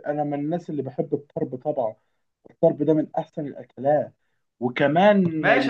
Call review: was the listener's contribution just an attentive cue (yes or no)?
no